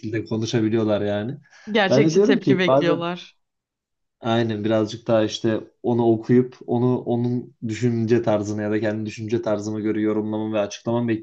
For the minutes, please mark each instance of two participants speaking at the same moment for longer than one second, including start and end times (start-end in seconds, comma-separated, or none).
1.9-3.1